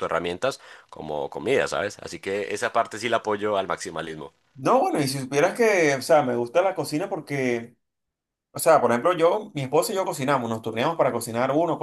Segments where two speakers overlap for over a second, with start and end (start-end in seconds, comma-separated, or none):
none